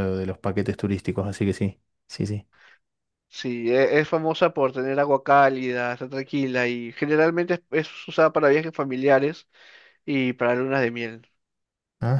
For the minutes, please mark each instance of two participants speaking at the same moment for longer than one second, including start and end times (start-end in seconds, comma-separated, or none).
none